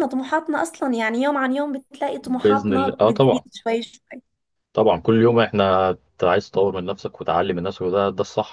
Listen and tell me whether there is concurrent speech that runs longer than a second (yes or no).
yes